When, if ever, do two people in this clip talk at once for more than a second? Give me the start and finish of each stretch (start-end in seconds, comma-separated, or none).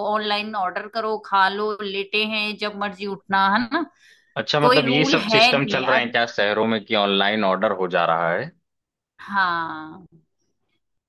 4.6-6.1